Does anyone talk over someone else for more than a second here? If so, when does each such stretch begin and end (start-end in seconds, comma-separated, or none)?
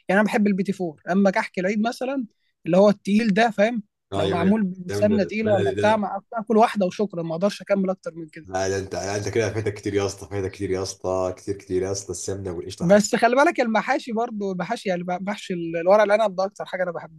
4.1-6.1